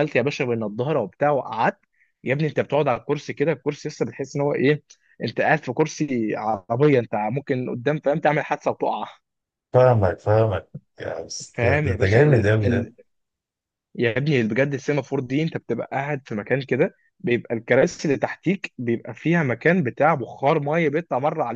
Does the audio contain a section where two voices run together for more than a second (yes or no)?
yes